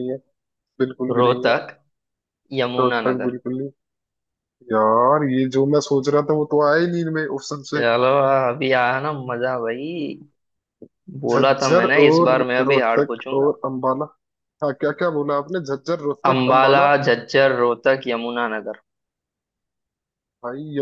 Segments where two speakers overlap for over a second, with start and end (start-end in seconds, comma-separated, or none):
11.3-13.6